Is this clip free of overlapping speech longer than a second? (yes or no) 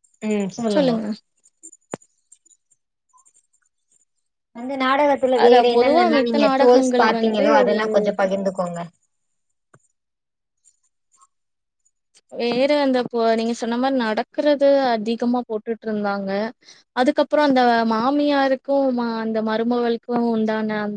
no